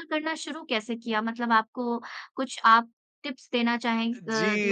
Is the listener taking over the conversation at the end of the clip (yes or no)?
yes